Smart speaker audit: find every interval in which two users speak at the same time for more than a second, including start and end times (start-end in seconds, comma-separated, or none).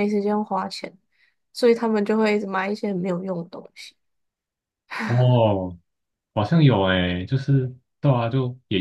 none